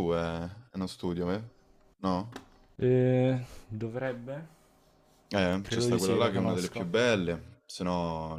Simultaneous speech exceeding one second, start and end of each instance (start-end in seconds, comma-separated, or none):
5.6-7.0